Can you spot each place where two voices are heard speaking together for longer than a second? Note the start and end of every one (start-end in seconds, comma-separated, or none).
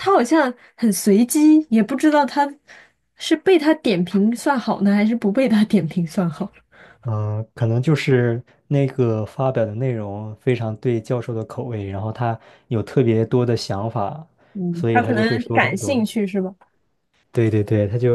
14.7-16.0